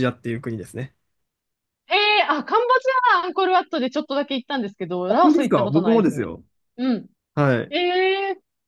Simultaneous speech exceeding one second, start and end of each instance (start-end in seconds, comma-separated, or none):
5.1-6.3